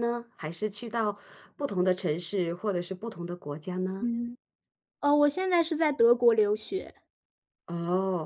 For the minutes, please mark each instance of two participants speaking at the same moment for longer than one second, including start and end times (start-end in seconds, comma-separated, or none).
none